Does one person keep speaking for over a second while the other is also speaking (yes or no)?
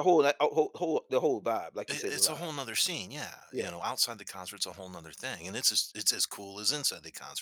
no